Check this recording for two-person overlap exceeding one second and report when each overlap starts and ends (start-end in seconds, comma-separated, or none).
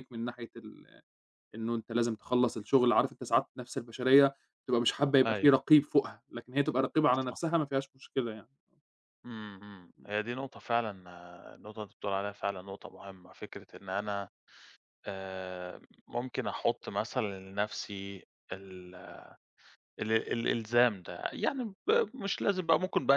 none